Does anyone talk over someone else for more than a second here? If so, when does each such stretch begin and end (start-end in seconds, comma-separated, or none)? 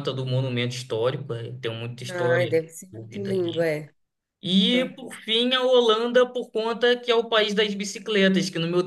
2.1-3.7